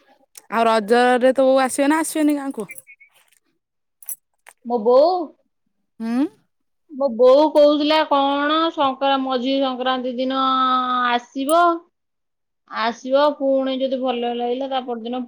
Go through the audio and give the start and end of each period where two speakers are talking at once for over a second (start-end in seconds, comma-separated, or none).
none